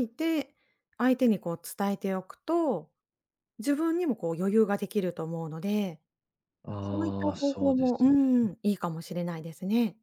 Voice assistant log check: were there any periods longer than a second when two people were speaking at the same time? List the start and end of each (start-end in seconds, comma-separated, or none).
6.8-8.1